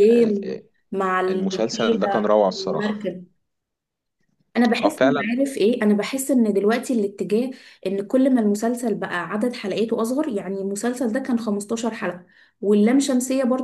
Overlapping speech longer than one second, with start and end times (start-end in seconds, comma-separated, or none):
1.3-3.0